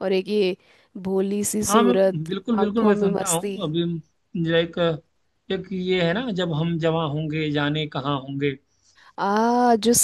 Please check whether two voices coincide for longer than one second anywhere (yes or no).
yes